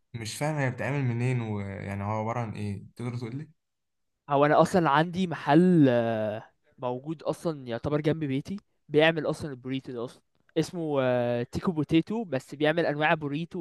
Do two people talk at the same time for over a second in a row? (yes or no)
no